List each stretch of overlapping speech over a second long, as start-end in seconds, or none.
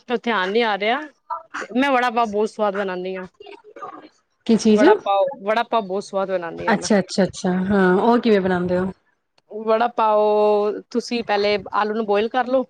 none